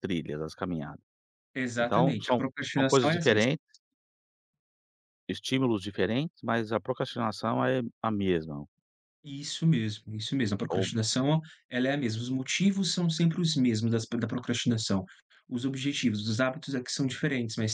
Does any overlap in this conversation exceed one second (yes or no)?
yes